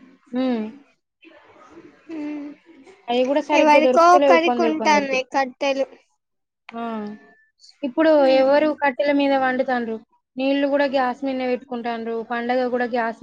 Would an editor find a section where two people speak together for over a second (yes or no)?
yes